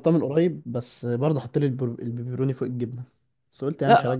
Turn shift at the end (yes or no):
yes